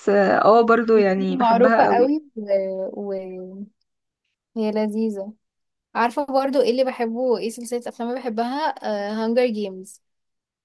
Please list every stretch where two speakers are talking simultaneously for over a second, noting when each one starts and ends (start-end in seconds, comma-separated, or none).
0.8-2.1